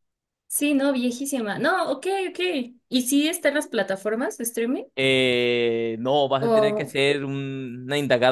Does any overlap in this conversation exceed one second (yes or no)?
no